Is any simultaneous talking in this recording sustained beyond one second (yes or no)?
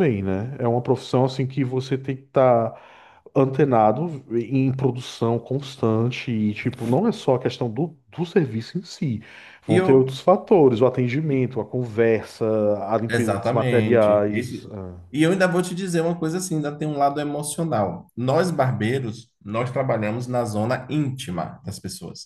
yes